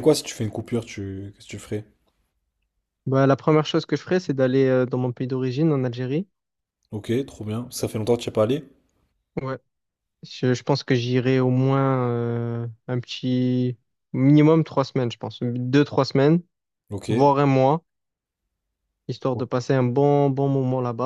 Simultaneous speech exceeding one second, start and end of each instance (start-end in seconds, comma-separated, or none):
none